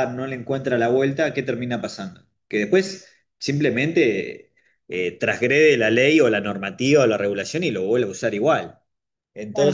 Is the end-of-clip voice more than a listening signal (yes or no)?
no